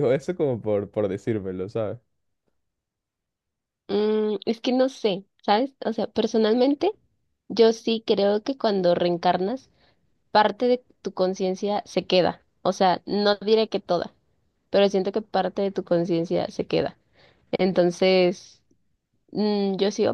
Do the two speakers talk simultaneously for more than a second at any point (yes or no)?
no